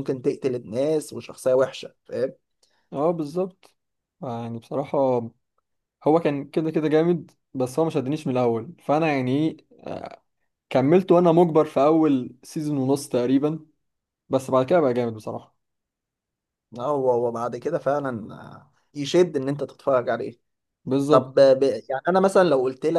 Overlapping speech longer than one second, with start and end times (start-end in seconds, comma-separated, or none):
none